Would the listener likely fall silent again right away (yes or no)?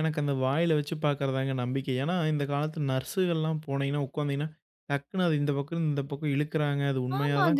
no